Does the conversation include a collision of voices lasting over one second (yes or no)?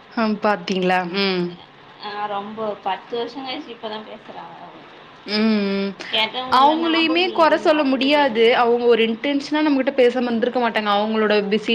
yes